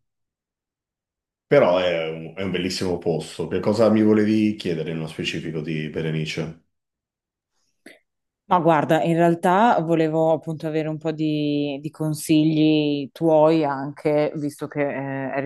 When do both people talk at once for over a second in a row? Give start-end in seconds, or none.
none